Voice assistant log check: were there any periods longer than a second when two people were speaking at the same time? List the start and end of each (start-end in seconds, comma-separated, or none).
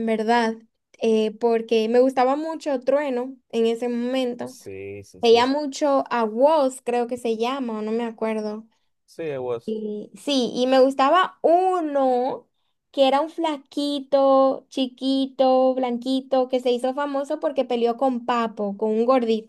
none